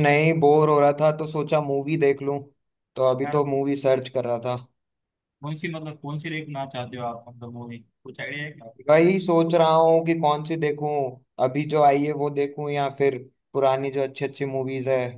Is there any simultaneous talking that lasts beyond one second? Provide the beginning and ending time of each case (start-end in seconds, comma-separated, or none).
none